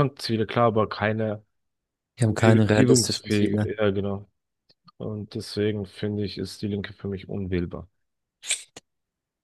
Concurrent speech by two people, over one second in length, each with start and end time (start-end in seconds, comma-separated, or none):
2.3-3.7